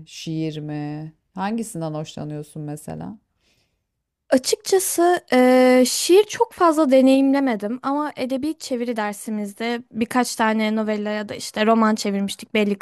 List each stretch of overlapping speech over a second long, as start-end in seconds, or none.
none